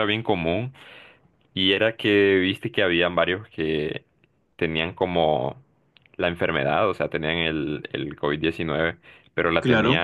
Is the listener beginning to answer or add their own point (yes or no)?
no